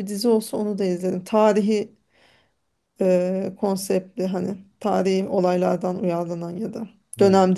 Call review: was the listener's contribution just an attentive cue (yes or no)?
no